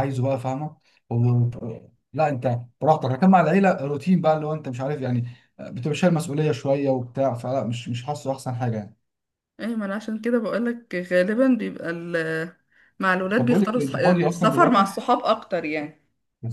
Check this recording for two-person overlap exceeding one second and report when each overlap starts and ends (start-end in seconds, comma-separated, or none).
13.4-14.9